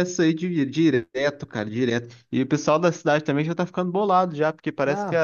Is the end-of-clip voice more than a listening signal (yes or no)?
no